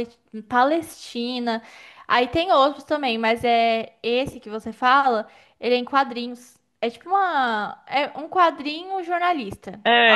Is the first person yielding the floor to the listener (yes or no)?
yes